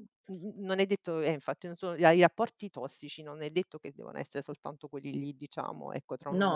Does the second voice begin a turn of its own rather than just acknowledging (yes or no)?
no